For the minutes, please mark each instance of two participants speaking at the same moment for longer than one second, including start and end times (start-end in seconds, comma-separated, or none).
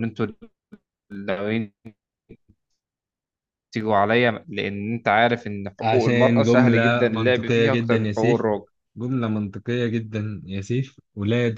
5.8-8.5